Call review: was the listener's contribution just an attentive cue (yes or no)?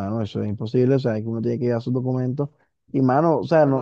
yes